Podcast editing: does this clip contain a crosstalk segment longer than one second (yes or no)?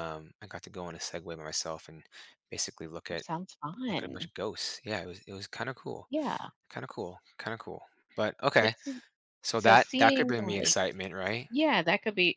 yes